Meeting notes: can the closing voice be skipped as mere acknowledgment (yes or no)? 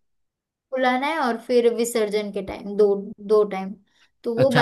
no